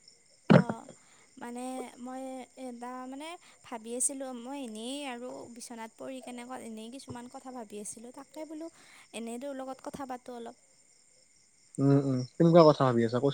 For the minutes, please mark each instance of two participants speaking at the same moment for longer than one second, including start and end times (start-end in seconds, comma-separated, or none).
none